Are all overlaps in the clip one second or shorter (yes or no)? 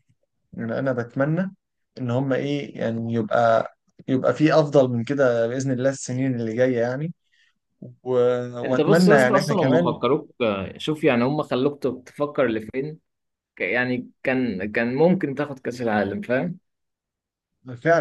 no